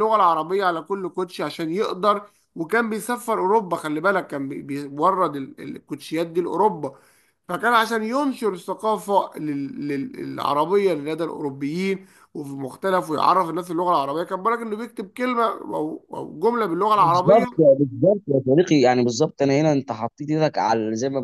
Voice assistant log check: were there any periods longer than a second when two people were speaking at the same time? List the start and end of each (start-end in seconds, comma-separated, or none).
none